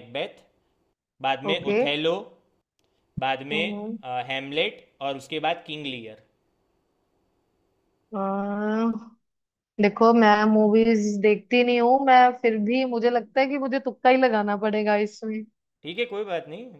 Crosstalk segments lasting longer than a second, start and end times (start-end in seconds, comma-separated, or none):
none